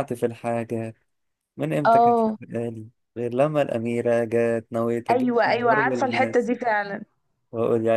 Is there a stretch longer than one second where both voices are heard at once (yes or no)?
yes